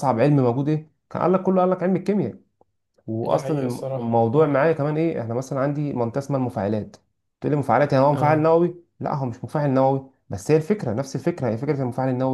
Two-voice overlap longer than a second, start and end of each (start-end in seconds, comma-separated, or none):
3.2-4.6